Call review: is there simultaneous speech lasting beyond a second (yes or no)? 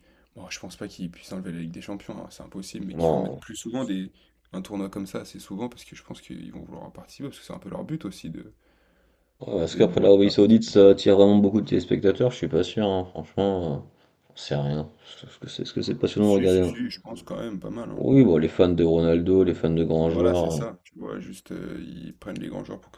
yes